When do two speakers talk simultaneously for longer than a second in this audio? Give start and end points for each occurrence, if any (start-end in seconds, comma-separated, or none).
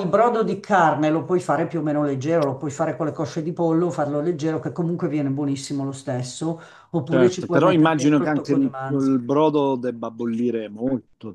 7.1-9.2